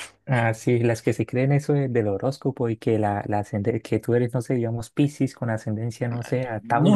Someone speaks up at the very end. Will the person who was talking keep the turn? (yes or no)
no